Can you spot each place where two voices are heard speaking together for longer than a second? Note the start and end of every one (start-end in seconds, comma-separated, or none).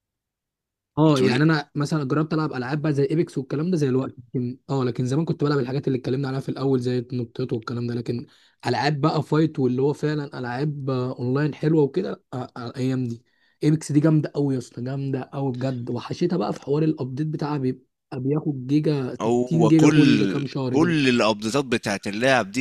19.2-20.9